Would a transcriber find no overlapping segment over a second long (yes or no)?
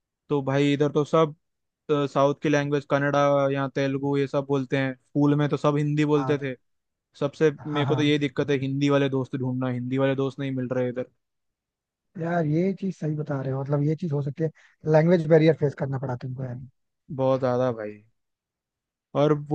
yes